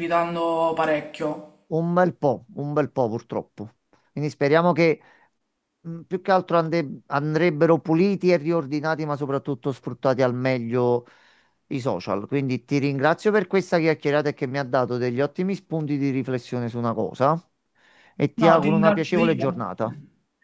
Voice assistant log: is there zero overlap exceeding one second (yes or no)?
no